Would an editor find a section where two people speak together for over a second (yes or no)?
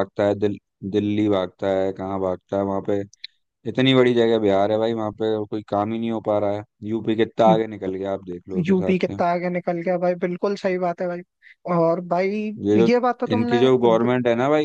no